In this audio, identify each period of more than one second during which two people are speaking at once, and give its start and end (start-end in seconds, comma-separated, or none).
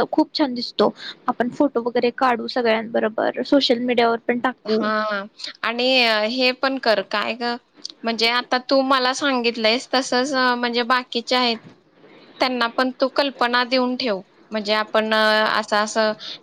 none